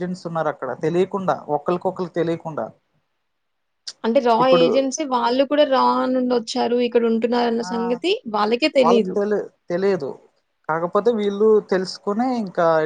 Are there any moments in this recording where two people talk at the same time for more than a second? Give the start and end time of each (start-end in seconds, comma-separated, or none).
none